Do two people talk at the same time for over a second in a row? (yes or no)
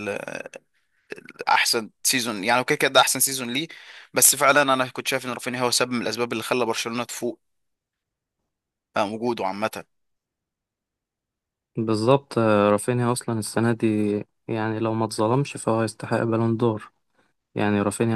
no